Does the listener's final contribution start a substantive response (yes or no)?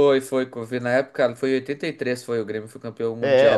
yes